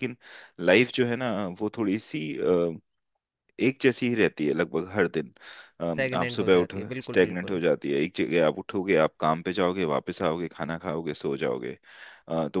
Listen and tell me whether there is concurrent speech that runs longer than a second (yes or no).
yes